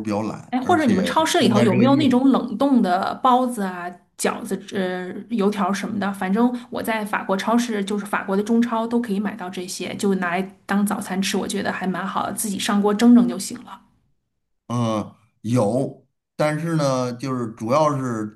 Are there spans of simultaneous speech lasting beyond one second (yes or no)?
yes